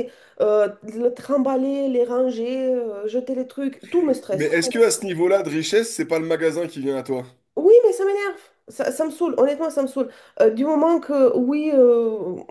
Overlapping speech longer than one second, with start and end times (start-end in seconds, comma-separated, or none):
none